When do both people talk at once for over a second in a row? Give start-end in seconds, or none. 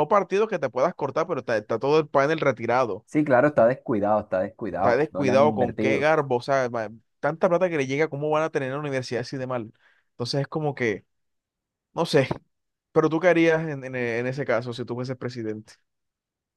4.8-6.1